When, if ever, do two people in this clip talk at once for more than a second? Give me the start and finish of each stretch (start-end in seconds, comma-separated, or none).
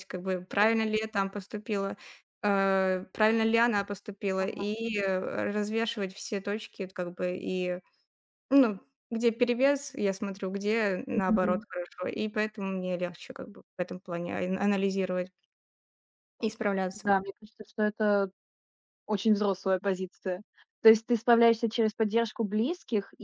none